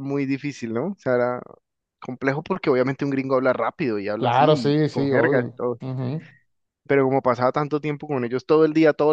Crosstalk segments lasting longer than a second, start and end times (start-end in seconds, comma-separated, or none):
4.2-5.8